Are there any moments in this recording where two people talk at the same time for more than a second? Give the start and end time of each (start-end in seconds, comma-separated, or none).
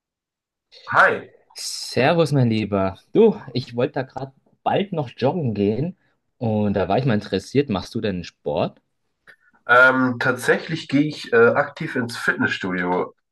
none